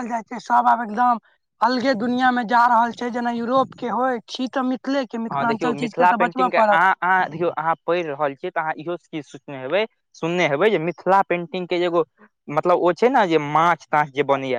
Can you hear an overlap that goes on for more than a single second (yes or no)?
yes